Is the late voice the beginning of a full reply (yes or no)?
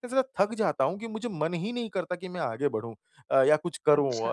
no